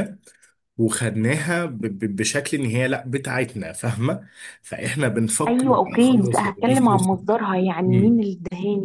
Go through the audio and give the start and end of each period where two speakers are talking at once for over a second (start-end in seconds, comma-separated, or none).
5.5-6.7